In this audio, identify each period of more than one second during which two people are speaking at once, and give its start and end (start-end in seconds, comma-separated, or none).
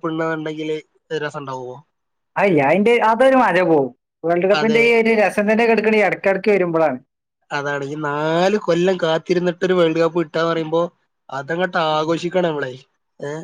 none